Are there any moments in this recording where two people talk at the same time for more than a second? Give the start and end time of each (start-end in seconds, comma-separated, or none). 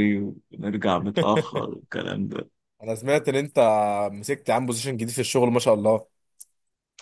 none